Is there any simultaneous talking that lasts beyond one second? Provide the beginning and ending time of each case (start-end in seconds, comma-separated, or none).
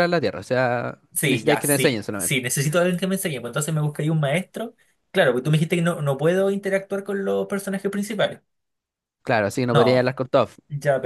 1.1-2.4